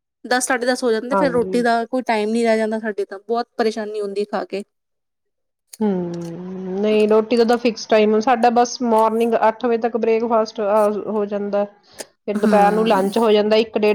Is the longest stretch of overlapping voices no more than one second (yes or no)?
yes